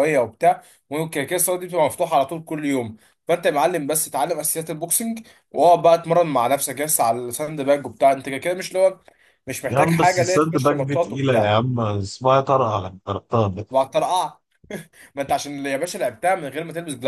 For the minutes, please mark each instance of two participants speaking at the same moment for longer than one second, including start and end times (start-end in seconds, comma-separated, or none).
9.7-11.5